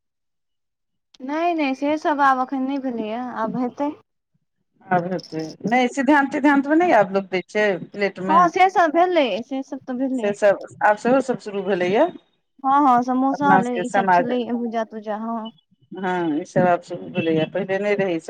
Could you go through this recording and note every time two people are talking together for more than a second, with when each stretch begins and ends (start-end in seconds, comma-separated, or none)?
none